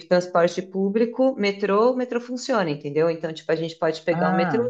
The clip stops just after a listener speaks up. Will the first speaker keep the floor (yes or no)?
yes